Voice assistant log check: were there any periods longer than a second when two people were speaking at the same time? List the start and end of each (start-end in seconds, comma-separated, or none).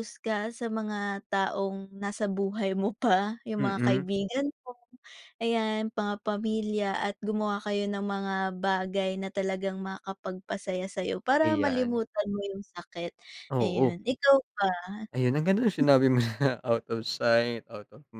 none